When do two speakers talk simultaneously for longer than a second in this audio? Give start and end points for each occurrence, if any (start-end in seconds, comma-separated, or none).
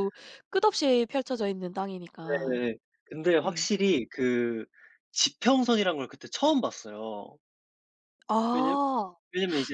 none